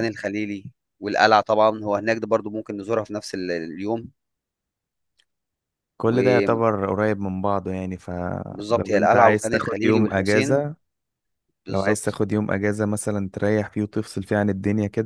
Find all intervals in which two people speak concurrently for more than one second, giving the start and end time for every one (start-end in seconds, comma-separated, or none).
8.9-10.6